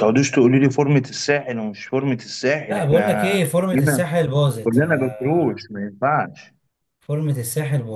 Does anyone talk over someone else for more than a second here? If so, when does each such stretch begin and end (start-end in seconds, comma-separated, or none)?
2.7-4.0